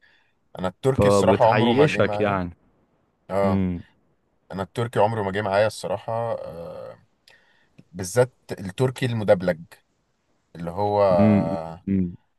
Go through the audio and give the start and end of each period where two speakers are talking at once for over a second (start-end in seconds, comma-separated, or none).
0.9-2.4